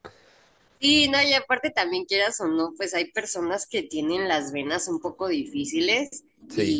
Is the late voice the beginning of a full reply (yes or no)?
no